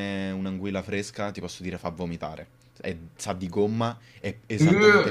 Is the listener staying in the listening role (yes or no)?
yes